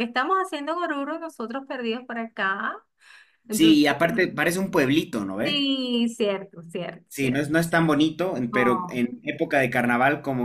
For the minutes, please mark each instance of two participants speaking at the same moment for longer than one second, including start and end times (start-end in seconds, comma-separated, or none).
none